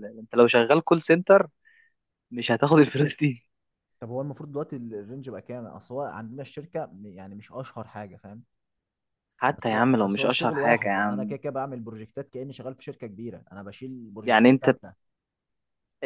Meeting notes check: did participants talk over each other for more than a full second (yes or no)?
yes